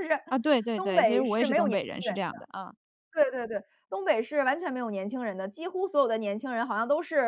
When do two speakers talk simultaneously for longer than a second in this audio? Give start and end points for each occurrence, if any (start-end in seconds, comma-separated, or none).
0.7-2.2